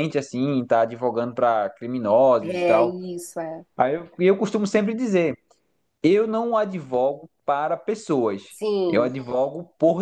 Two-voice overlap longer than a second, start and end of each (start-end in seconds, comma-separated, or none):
none